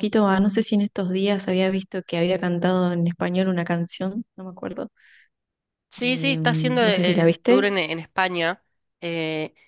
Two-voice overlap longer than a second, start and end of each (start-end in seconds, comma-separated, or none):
6.0-7.7